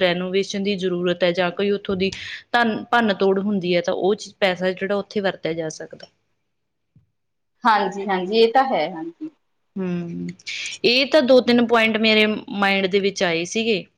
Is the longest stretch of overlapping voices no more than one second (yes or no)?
yes